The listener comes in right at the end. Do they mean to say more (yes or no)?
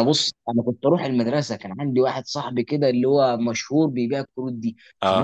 no